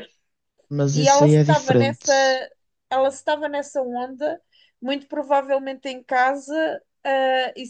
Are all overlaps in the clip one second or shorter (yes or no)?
no